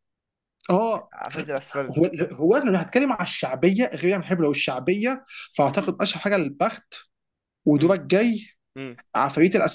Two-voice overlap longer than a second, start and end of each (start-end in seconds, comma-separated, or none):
none